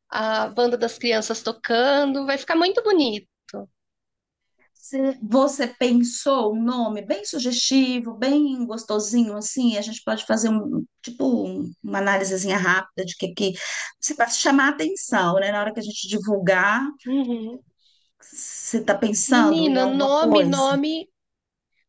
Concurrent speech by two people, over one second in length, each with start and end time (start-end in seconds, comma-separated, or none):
19.3-20.7